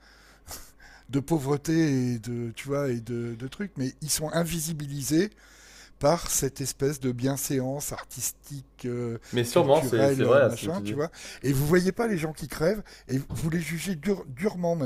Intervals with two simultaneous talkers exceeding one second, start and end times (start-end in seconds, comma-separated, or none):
9.3-11.0